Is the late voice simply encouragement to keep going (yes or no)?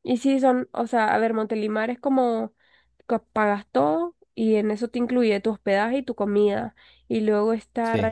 yes